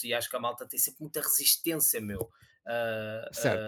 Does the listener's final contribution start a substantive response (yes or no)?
yes